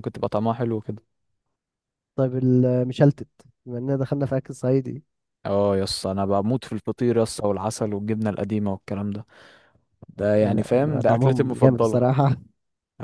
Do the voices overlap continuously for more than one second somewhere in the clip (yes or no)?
yes